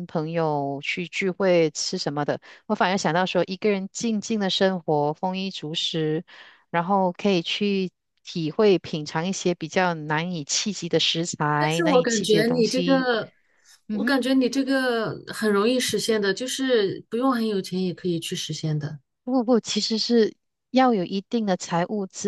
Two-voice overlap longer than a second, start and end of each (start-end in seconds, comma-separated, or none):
11.6-13.1